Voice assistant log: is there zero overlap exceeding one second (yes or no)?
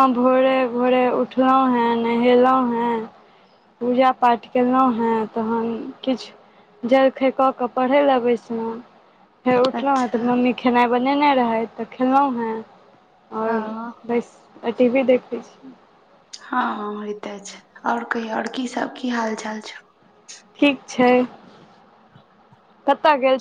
yes